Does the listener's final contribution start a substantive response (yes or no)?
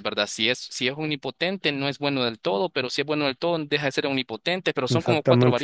yes